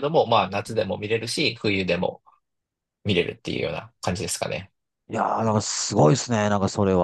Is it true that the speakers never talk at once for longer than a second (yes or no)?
yes